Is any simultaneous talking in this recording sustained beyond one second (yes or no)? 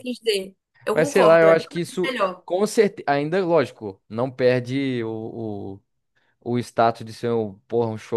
yes